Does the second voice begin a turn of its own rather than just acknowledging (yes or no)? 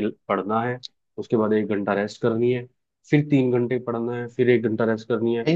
yes